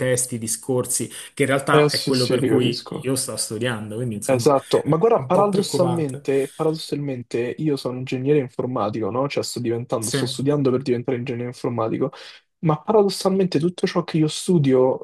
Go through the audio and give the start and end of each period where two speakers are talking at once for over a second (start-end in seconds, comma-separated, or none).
1.7-3.1, 4.3-6.3